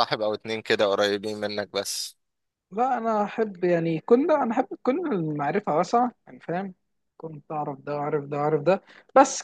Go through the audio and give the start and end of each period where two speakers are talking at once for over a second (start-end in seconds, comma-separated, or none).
none